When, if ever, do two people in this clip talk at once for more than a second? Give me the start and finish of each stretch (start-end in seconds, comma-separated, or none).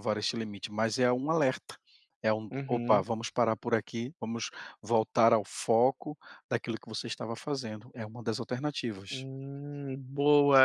none